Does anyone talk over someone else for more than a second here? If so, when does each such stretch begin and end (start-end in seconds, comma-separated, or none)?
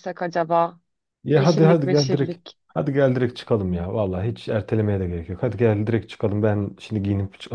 1.3-2.6